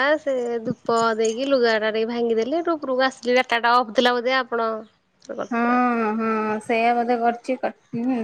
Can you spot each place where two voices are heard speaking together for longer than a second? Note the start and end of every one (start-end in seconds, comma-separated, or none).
none